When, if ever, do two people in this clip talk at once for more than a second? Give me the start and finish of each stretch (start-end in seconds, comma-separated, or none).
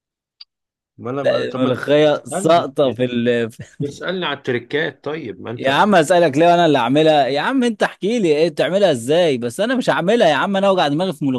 1.3-2.7